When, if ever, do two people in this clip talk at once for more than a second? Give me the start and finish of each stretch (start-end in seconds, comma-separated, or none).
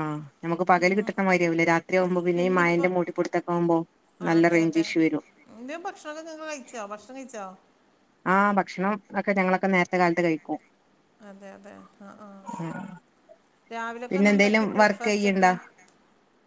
14.1-15.5